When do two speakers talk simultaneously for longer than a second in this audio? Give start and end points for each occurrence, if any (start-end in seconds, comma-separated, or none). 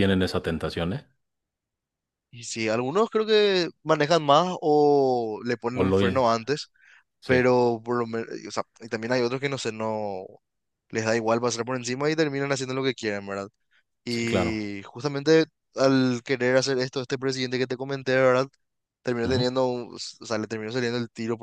none